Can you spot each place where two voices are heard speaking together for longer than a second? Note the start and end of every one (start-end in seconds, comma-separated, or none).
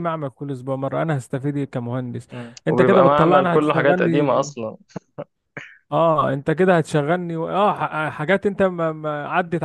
2.7-4.5